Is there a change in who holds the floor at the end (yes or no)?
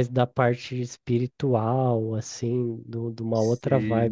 no